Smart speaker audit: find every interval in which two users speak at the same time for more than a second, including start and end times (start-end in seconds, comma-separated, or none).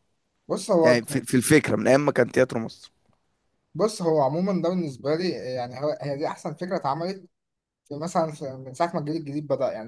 none